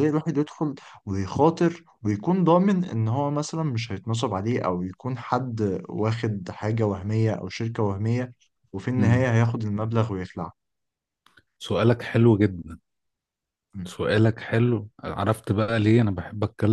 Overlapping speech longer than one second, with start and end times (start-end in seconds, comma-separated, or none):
none